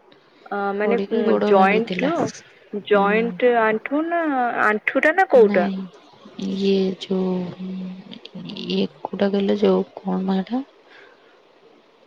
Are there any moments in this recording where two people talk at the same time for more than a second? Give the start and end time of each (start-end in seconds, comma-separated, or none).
0.8-3.1